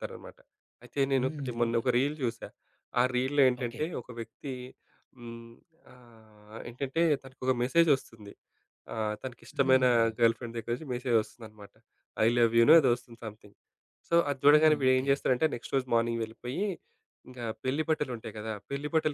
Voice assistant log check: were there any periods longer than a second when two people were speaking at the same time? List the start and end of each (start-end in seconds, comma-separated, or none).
none